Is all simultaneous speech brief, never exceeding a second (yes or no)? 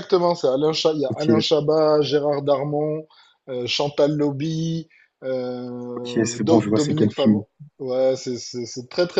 no